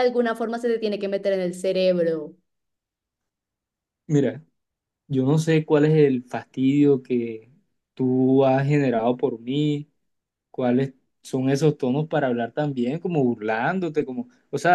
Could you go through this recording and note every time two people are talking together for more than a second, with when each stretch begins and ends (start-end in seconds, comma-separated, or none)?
none